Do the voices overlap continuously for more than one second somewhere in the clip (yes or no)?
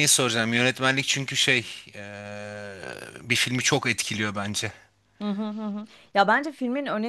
no